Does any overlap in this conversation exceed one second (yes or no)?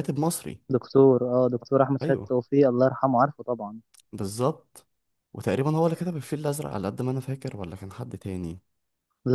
no